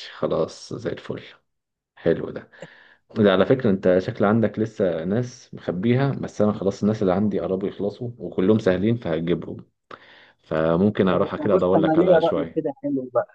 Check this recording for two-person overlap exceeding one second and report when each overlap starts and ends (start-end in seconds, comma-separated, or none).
11.1-12.6